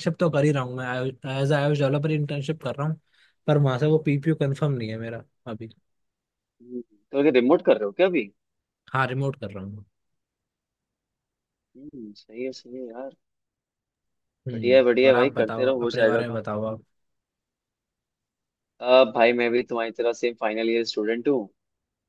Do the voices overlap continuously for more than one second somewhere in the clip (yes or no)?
yes